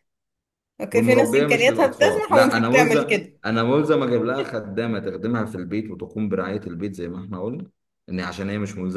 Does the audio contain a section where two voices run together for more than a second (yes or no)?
yes